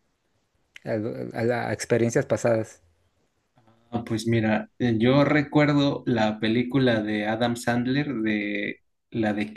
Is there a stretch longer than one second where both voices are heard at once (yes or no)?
no